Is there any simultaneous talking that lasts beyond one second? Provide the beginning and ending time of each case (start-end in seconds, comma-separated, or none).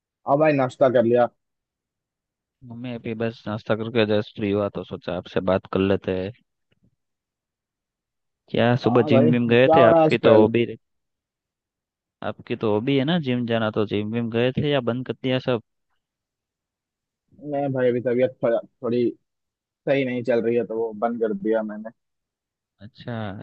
8.9-10.5